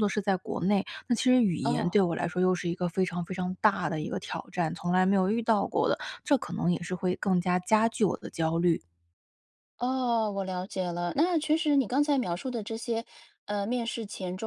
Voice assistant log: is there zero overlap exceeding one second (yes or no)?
yes